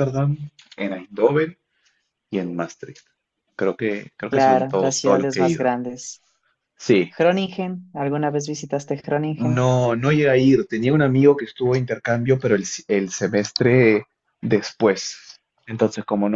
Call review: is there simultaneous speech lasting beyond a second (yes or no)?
yes